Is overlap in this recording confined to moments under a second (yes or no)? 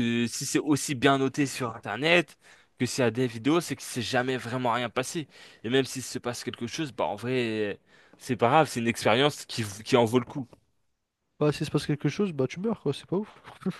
yes